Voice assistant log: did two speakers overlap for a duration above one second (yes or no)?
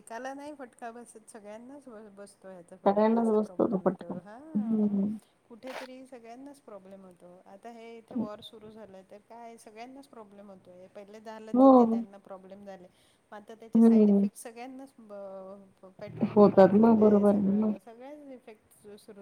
yes